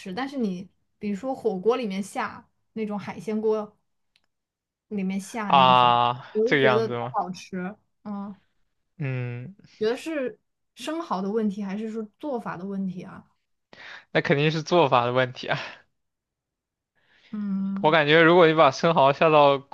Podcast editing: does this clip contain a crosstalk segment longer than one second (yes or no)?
yes